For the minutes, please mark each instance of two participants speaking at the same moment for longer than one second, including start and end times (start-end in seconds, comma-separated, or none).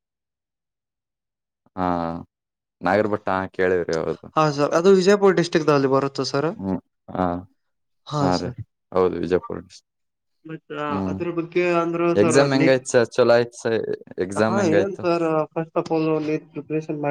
none